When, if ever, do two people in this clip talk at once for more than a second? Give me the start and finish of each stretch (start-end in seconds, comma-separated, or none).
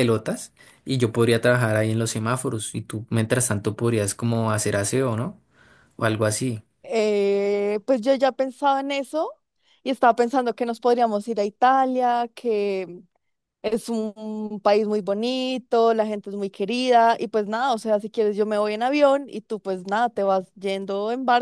none